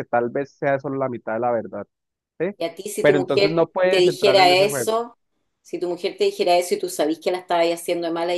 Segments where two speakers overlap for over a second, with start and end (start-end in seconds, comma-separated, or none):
3.0-5.0